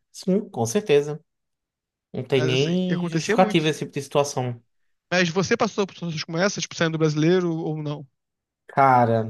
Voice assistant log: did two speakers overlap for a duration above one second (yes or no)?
yes